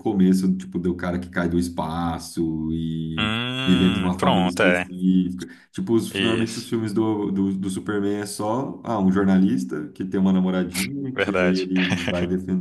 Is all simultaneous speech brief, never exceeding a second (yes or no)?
no